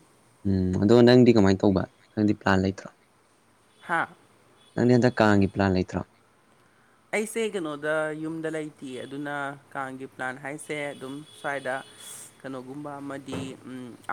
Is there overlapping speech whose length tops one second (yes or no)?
no